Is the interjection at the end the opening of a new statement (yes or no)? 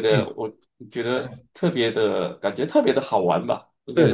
yes